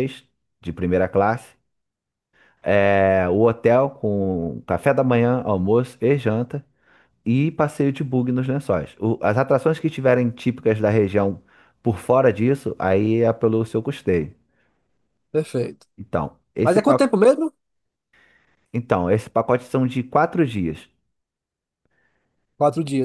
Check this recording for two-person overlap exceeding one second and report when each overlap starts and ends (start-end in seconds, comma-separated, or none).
none